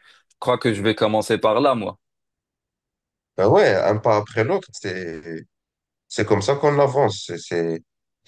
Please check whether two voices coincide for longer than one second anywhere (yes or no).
no